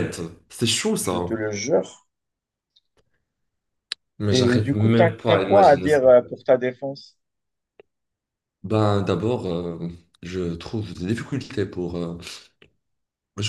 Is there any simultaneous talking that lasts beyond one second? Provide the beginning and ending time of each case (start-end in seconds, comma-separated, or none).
4.3-6.1